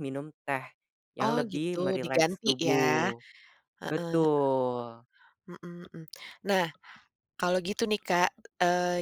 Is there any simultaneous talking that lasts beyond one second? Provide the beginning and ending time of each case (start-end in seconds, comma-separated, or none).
1.2-3.1